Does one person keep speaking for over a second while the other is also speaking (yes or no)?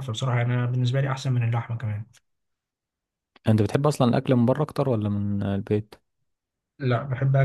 no